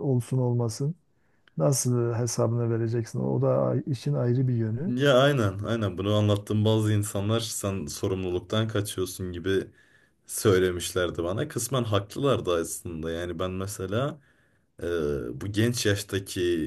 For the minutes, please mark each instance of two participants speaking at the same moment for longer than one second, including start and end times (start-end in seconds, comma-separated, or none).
none